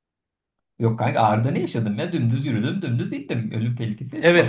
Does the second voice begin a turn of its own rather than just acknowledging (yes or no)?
yes